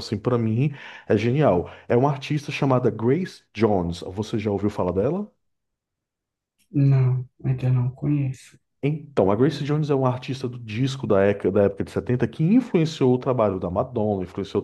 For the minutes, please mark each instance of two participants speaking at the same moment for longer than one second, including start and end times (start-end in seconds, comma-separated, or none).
none